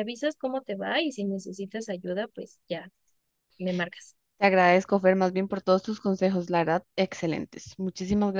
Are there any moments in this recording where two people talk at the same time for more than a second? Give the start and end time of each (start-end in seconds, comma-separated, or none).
none